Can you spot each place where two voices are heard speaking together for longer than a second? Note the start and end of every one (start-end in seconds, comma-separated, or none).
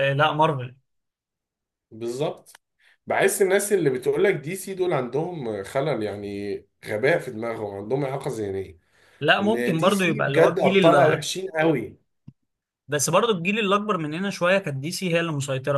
9.4-11.2